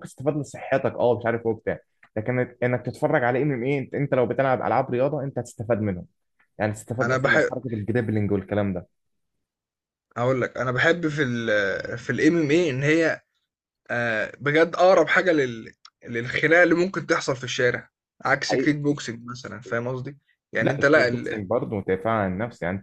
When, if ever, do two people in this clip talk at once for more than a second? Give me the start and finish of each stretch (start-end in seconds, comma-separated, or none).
none